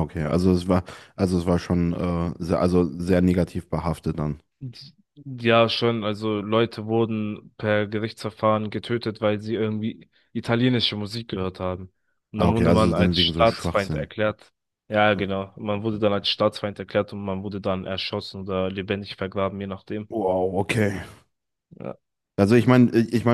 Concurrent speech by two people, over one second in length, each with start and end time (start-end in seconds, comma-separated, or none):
12.4-14.1